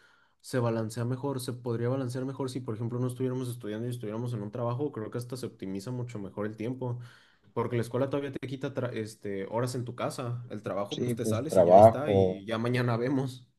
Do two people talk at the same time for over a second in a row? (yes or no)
yes